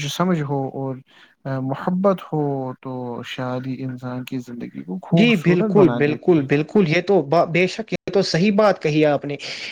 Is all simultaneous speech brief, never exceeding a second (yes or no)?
no